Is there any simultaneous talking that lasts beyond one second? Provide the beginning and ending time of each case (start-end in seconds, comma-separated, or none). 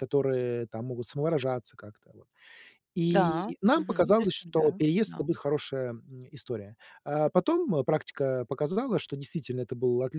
3.1-5.2